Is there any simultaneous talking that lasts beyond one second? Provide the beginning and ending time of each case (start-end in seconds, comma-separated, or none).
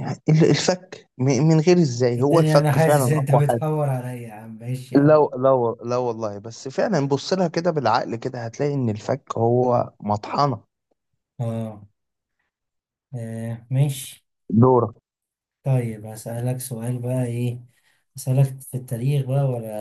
2.1-3.4